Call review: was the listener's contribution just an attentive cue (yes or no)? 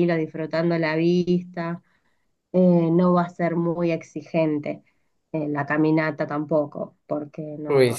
no